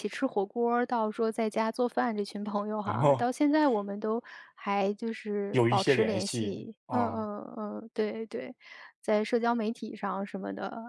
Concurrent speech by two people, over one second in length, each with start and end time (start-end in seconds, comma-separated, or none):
5.5-7.3